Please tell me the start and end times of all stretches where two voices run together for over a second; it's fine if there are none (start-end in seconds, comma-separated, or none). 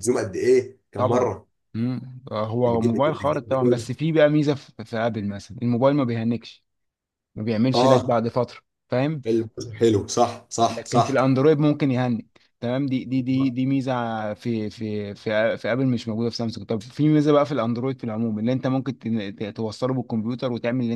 2.7-3.9